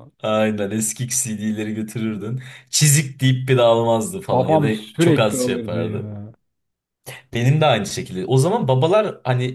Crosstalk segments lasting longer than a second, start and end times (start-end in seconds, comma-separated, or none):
4.3-6.1